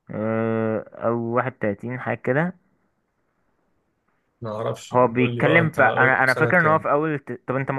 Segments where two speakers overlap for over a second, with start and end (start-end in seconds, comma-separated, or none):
4.9-6.8